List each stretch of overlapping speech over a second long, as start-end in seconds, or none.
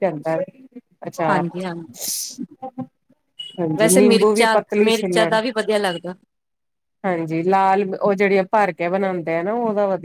3.8-5.3